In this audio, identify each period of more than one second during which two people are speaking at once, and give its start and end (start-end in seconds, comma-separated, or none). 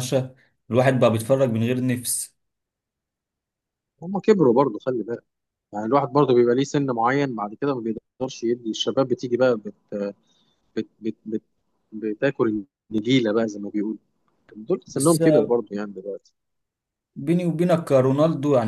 none